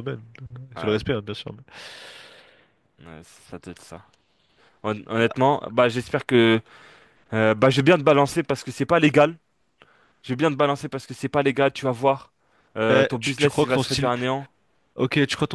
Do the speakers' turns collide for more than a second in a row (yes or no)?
yes